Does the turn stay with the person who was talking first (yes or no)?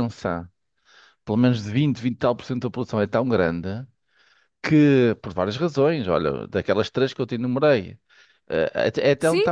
yes